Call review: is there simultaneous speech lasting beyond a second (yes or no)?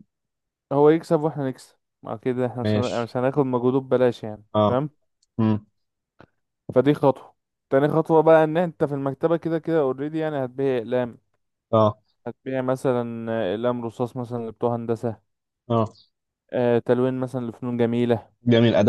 no